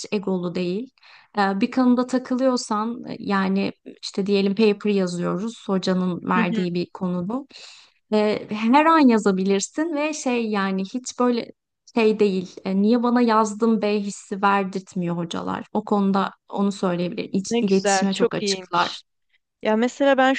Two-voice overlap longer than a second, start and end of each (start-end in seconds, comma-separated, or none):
17.5-19.0